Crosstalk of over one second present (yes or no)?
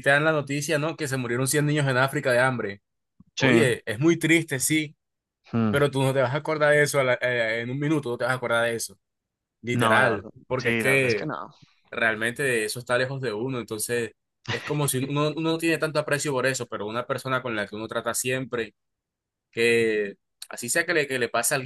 yes